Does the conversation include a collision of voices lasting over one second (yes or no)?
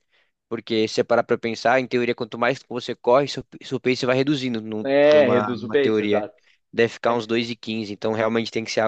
yes